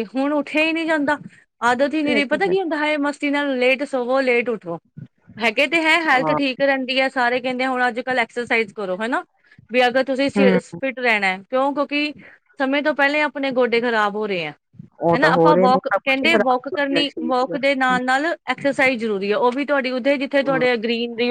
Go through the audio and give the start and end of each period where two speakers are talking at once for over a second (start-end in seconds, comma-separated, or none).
15.0-18.1